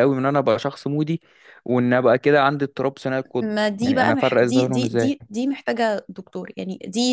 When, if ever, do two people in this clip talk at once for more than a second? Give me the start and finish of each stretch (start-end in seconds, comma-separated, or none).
3.4-5.2